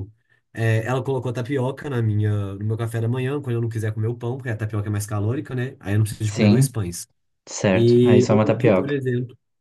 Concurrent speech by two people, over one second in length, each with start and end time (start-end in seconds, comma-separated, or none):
7.7-9.0